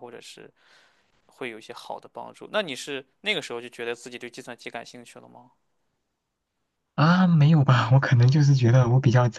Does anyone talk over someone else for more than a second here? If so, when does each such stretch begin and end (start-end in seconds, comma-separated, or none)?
none